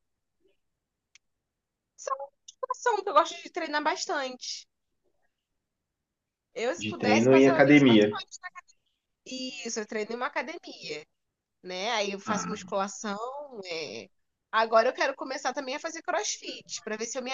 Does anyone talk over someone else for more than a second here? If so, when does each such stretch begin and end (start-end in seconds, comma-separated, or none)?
6.8-8.1